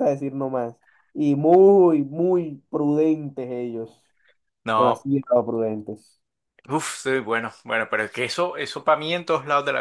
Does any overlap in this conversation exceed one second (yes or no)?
no